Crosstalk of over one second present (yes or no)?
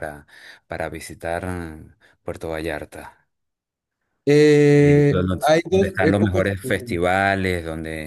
yes